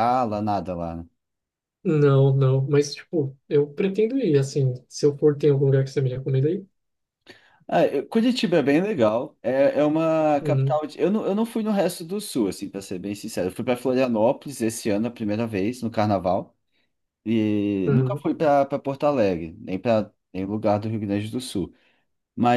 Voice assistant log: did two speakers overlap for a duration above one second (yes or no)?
no